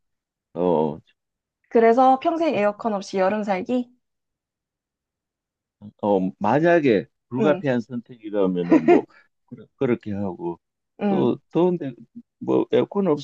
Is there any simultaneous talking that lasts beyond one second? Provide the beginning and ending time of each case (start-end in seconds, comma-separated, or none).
none